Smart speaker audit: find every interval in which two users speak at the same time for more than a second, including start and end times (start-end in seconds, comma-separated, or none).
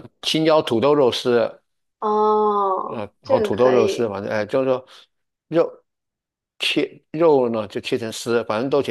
2.9-4.1